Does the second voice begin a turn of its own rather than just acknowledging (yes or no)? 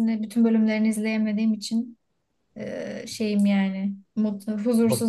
yes